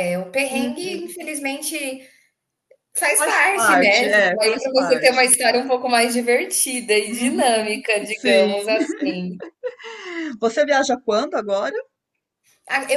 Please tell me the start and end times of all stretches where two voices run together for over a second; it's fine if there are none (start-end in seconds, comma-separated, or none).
3.1-5.3, 7.1-8.5